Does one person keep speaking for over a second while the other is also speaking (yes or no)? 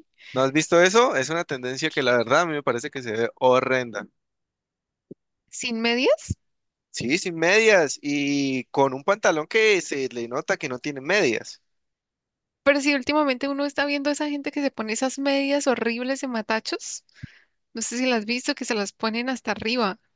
no